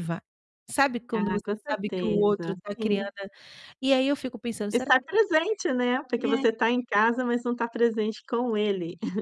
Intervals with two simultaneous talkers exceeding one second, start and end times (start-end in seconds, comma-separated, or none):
1.1-3.0